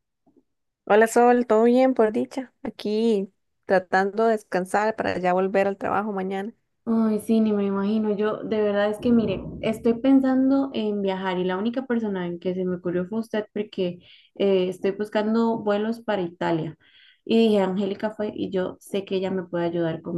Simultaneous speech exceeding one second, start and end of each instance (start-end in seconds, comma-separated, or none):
none